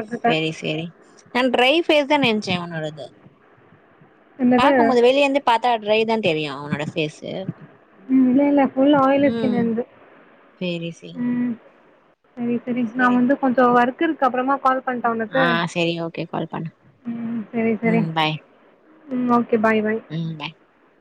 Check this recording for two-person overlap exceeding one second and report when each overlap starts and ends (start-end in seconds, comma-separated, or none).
none